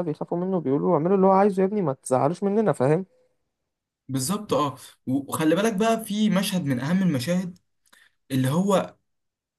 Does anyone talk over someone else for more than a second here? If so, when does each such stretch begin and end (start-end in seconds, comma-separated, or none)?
none